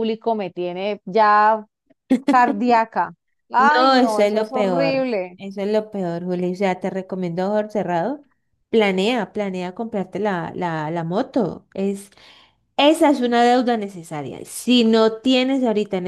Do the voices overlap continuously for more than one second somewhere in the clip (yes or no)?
yes